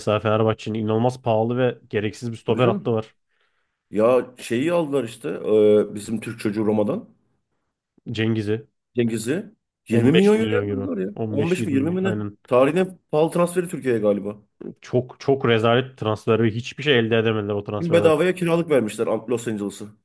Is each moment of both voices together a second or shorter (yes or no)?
no